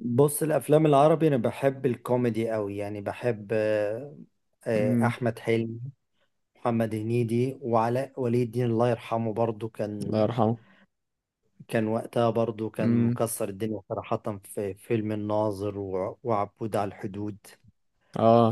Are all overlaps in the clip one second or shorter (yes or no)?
yes